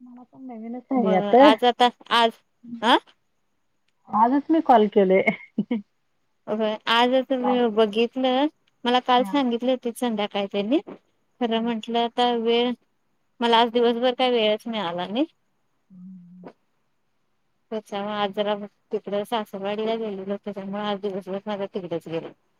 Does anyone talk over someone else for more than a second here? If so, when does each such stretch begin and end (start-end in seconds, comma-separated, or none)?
none